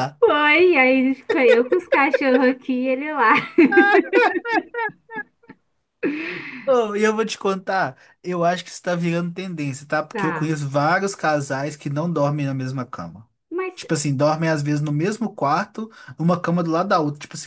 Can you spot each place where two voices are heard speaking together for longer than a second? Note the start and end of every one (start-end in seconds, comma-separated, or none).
none